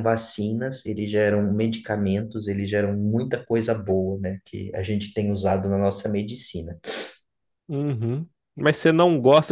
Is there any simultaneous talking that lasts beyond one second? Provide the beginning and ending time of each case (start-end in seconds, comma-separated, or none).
none